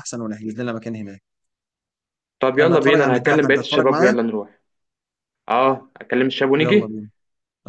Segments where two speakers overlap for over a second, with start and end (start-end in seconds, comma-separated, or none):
2.6-4.2